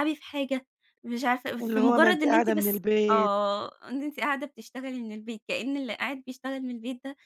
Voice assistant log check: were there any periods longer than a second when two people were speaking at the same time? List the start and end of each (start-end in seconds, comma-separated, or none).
1.6-3.3